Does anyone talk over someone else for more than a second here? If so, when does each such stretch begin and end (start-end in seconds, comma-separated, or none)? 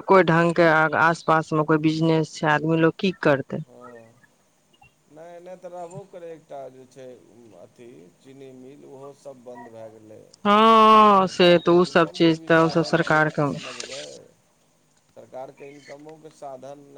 11.2-13.5